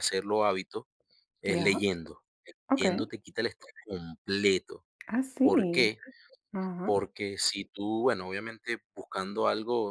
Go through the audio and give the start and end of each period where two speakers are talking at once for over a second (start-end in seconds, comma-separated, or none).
none